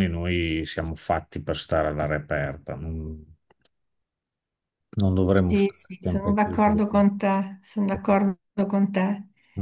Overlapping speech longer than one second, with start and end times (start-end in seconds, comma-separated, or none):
5.5-6.8